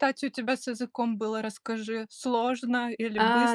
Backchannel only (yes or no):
no